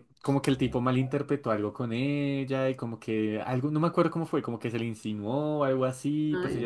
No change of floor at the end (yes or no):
yes